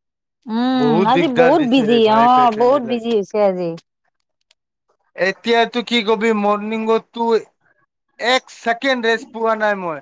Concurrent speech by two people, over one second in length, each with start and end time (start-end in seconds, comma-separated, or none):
0.8-3.0